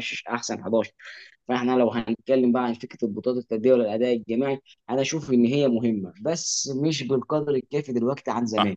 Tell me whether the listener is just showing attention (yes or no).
no